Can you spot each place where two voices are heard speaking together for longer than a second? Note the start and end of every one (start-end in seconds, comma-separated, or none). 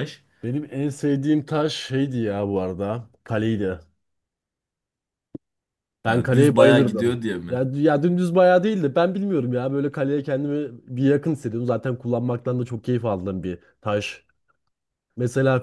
6.0-7.6